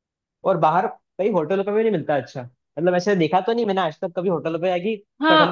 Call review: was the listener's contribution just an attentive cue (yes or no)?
no